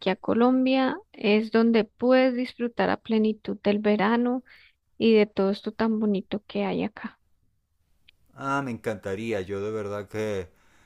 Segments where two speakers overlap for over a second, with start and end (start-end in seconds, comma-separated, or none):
none